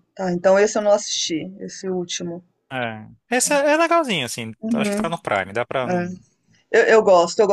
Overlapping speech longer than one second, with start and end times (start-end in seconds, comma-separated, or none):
none